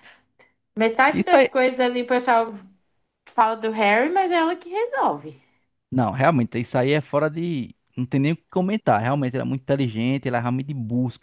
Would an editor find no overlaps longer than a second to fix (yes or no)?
yes